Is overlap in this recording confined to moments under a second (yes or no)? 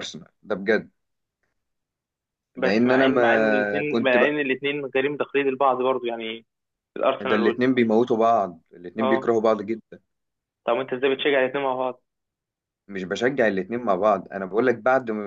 no